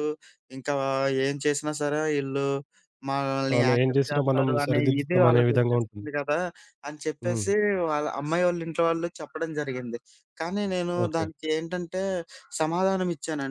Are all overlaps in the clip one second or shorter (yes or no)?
no